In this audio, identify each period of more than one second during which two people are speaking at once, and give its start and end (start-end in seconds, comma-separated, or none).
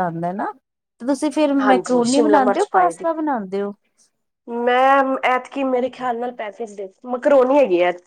1.6-3.1